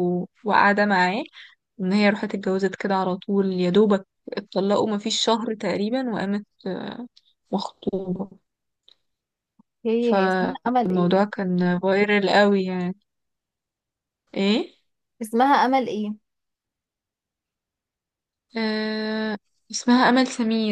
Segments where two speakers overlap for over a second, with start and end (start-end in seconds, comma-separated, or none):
10.0-11.3